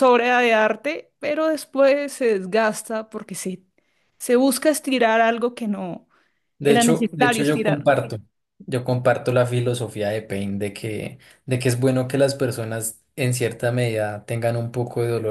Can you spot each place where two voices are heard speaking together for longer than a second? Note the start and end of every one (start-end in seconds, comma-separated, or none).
6.6-7.9